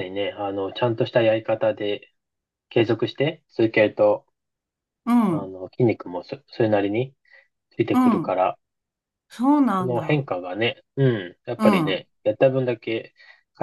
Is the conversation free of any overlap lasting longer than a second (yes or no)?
yes